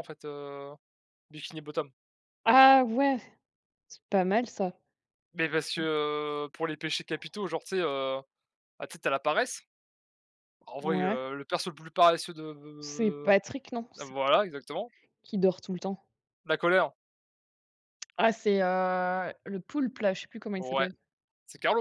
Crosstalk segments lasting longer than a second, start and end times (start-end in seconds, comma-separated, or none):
none